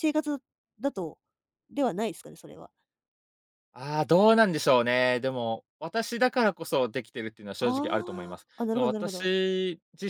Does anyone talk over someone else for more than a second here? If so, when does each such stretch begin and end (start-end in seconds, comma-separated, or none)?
7.6-9.3